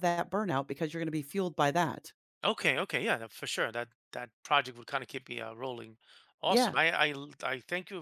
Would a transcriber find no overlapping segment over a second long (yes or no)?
yes